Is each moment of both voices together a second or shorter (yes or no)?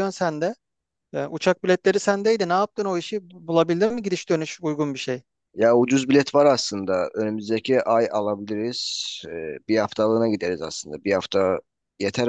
yes